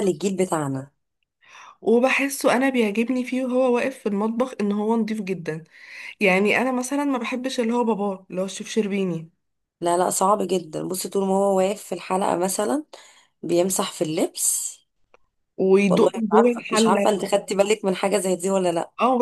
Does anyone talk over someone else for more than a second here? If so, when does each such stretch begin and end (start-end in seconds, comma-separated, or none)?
15.9-17.2